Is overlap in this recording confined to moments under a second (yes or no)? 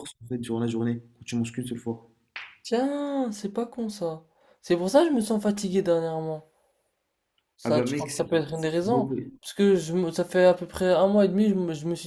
no